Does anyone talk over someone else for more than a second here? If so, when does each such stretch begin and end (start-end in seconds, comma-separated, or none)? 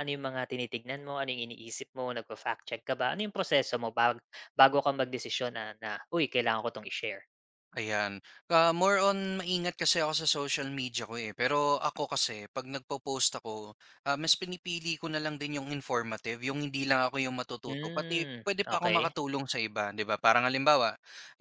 17.6-19.1